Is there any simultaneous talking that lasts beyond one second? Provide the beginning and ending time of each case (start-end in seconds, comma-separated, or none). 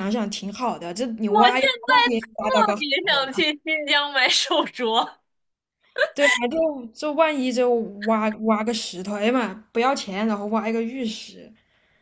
1.2-3.5